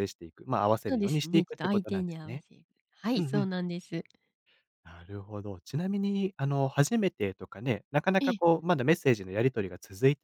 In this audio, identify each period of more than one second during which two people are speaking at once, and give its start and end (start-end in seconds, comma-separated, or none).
0.9-2.4